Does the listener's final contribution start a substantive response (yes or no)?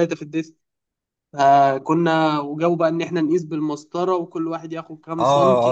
yes